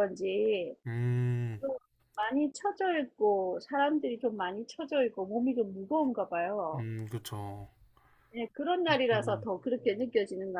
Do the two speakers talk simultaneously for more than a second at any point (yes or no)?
no